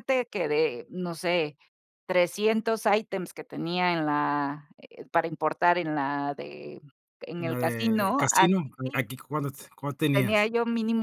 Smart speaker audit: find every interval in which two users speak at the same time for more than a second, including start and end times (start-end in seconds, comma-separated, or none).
7.4-9.0